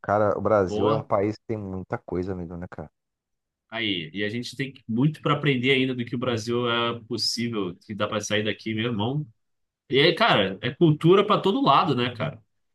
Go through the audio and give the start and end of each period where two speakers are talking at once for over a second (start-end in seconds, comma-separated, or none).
none